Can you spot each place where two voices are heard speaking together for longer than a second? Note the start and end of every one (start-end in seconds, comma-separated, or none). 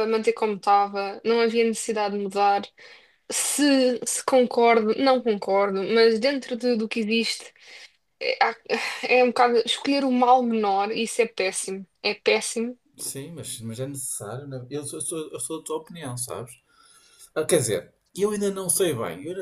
none